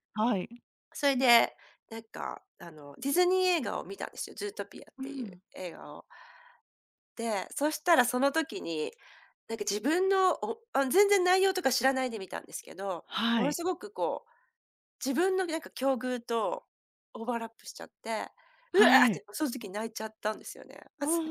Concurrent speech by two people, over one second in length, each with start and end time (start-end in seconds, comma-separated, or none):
none